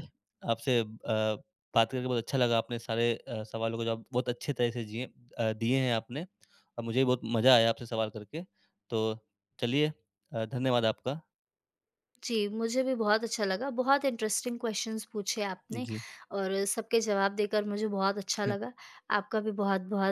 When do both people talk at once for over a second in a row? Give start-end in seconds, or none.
none